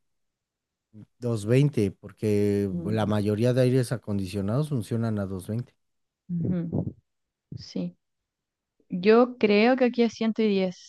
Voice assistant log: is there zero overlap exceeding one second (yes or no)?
yes